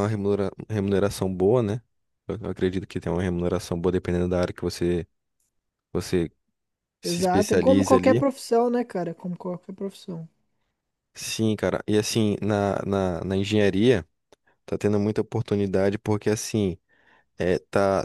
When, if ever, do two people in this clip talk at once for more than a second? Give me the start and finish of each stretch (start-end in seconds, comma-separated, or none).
7.0-8.2